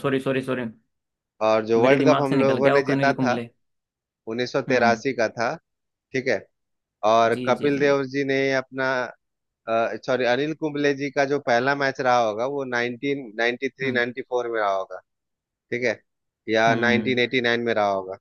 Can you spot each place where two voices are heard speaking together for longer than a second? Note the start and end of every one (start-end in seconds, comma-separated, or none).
1.8-3.4